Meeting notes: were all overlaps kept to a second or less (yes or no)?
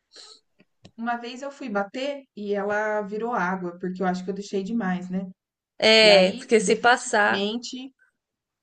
no